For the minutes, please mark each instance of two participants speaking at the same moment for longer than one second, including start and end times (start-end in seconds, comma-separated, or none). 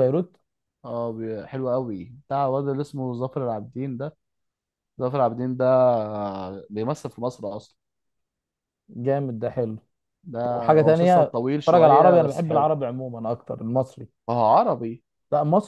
10.4-12.7